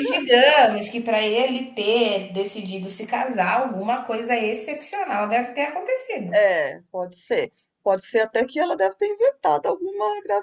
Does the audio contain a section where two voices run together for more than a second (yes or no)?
no